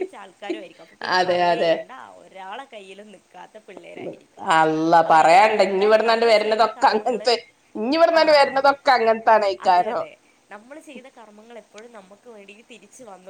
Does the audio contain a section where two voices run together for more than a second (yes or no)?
yes